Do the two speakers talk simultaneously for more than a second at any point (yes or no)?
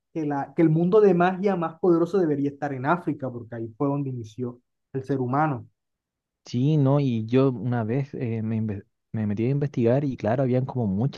no